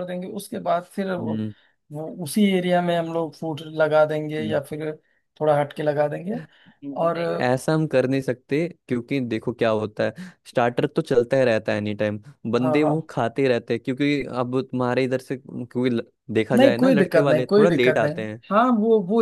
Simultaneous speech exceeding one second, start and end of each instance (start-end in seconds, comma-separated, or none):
16.6-18.1